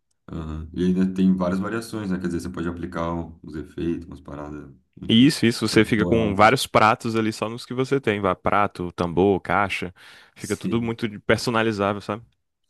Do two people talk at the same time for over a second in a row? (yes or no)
yes